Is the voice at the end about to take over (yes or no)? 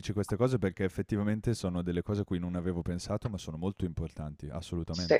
yes